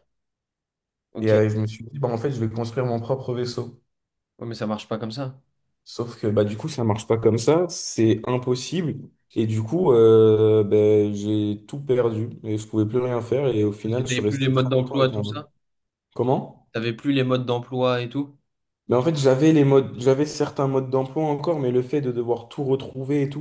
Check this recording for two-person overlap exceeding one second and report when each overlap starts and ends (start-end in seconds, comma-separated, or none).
13.8-15.4